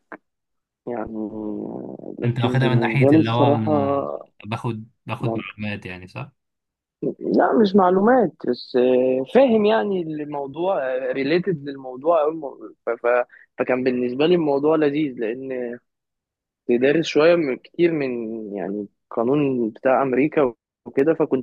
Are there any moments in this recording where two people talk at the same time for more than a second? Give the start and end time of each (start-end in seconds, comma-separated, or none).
2.2-3.7